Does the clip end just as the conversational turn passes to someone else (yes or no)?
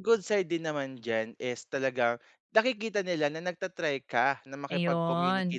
no